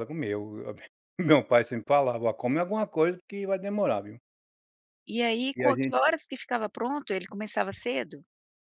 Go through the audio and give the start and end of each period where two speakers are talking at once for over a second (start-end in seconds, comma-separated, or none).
none